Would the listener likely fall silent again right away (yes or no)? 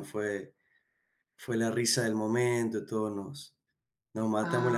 yes